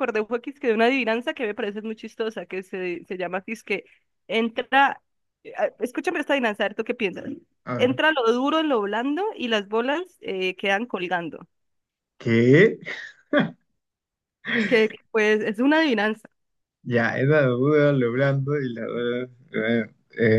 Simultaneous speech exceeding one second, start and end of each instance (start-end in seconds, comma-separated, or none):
none